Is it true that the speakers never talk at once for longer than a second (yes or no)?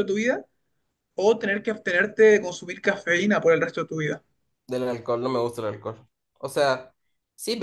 yes